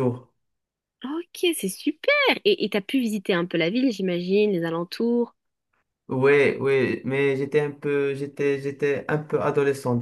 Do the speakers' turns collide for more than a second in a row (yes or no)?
no